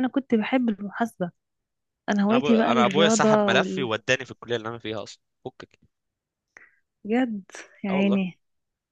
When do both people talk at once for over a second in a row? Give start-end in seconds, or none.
2.3-3.9